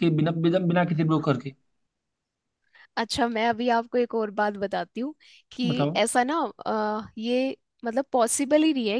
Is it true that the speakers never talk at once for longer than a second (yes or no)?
yes